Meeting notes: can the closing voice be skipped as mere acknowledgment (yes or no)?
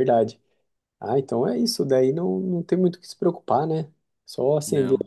yes